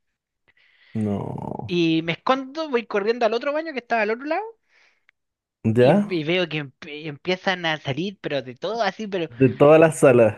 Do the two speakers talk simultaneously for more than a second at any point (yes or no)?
no